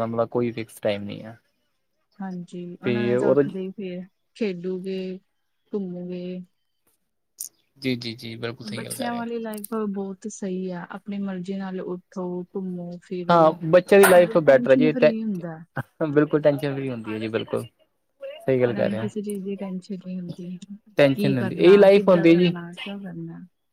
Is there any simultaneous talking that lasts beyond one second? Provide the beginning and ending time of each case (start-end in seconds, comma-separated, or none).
21.0-22.5